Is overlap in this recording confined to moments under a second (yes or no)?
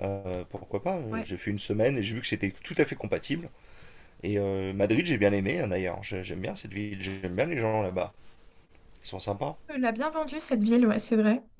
yes